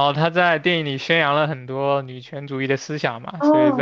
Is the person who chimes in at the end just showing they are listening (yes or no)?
no